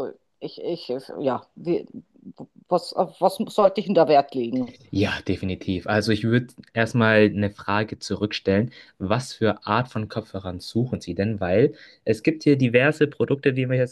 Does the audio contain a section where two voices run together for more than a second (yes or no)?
no